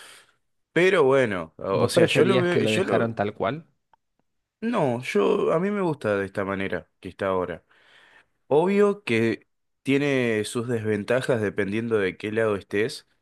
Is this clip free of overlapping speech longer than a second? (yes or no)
no